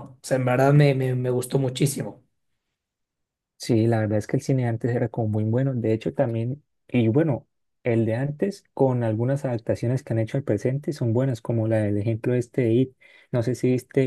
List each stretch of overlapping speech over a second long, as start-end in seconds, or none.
none